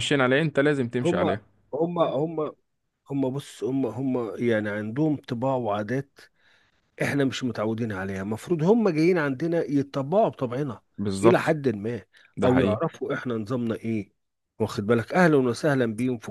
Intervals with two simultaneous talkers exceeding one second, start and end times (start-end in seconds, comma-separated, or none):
none